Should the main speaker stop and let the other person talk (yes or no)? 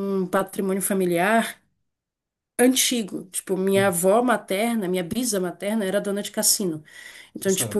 no